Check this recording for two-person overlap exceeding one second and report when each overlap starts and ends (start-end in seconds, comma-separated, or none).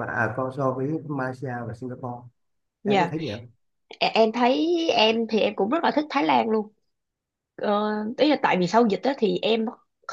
none